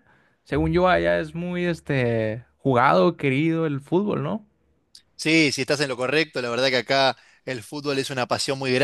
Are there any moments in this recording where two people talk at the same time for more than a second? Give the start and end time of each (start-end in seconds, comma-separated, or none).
none